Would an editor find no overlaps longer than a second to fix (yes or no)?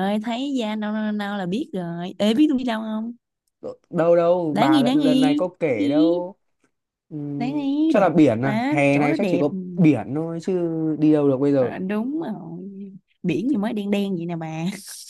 no